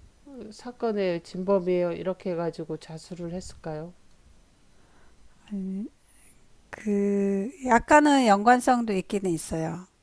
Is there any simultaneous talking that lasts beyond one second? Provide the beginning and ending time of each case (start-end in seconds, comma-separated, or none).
none